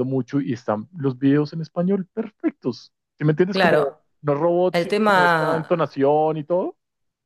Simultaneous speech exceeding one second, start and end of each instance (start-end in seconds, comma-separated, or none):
4.7-6.0